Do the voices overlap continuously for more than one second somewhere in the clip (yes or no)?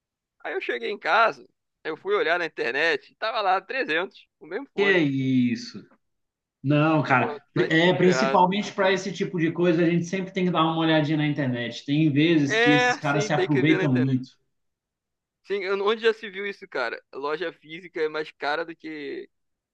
yes